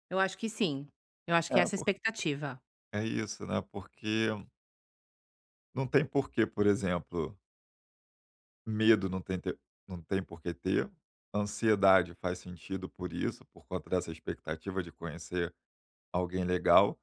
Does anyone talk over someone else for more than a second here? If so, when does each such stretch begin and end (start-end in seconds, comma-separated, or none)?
none